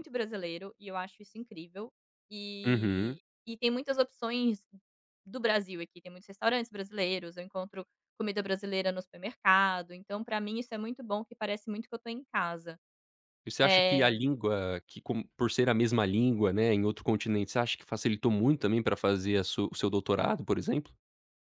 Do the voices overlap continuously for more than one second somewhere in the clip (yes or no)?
no